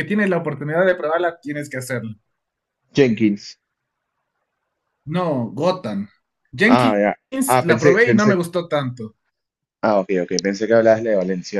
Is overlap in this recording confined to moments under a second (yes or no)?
no